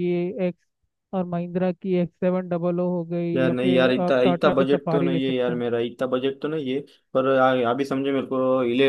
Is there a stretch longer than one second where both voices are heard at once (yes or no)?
yes